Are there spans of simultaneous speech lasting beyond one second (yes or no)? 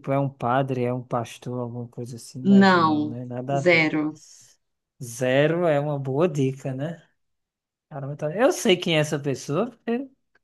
yes